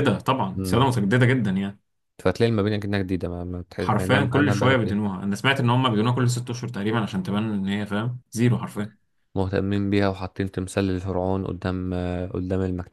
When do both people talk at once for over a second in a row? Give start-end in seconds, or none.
3.8-5.0